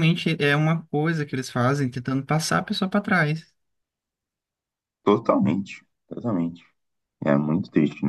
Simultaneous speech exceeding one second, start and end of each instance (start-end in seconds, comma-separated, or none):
none